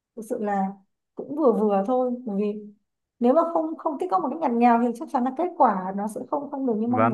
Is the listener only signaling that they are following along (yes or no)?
no